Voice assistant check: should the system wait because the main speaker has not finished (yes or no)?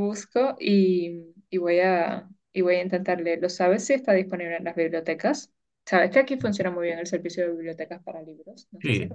no